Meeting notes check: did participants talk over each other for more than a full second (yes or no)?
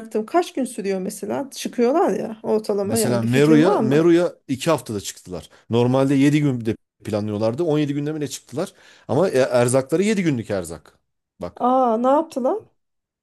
yes